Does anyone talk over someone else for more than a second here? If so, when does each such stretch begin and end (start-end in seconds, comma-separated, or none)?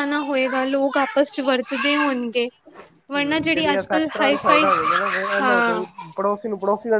3.2-4.7